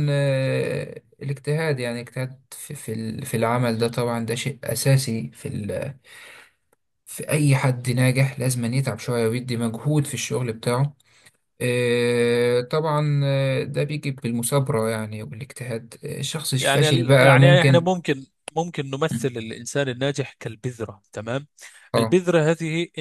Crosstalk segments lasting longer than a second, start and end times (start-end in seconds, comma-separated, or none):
16.6-17.9